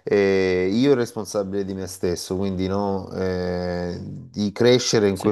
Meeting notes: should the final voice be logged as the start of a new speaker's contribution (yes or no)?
no